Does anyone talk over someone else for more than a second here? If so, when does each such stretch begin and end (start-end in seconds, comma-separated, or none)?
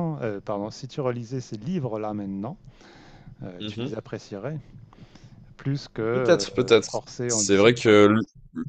6.1-8.0